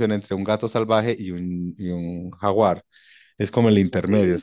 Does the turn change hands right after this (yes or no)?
no